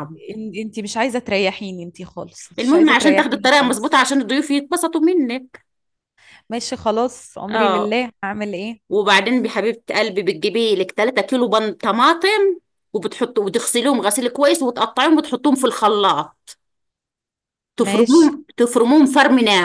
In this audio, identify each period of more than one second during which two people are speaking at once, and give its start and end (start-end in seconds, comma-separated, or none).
2.6-4.0